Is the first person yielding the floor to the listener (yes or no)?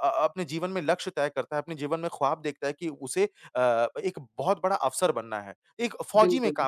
no